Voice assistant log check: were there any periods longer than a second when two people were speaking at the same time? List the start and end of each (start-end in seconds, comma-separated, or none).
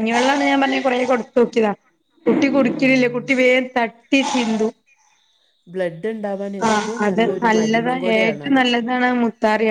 6.7-8.6